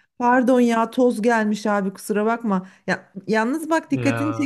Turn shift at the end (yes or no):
no